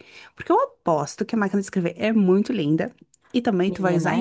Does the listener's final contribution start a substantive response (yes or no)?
no